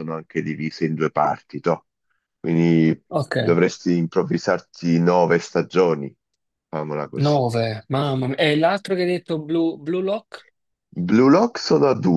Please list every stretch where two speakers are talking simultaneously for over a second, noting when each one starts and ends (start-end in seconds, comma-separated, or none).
none